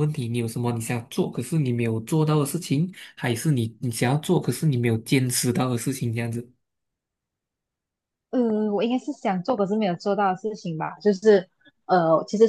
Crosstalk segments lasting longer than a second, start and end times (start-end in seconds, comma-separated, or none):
none